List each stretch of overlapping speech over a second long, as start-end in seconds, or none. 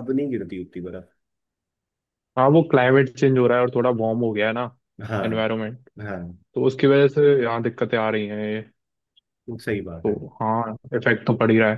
none